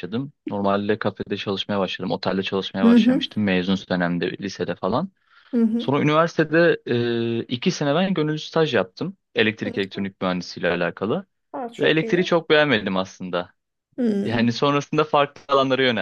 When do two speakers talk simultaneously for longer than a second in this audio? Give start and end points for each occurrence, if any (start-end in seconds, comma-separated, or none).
none